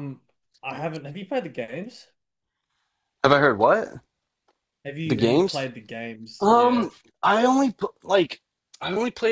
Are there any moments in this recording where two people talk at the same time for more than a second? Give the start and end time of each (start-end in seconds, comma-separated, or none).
none